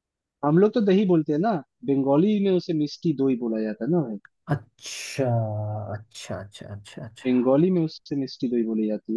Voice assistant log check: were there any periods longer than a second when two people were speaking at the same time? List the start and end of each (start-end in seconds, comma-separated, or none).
none